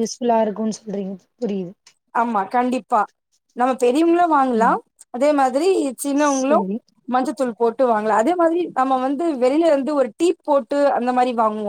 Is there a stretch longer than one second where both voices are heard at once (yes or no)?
no